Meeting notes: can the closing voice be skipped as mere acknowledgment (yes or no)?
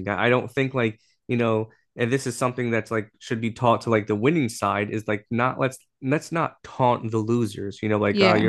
yes